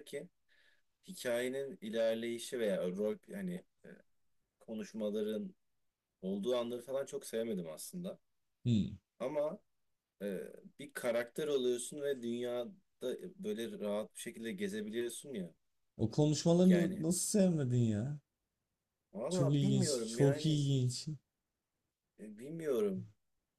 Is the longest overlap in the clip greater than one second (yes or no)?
yes